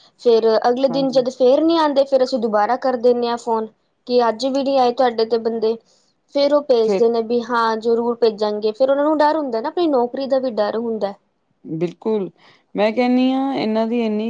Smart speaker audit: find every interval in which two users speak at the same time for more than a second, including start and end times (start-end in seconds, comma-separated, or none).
none